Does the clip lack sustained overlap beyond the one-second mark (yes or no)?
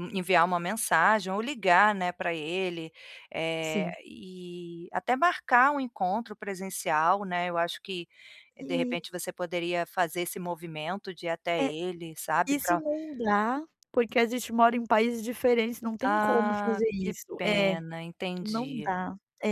no